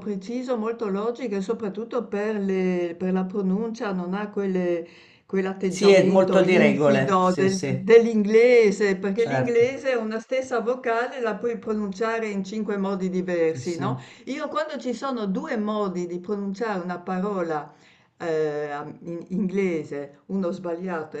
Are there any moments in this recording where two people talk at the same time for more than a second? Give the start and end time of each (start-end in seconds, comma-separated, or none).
5.7-7.9